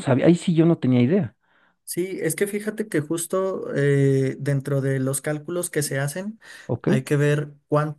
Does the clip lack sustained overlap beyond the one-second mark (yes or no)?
yes